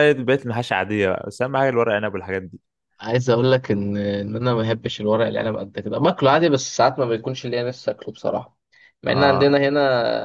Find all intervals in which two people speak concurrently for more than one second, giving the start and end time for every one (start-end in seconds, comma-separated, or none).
none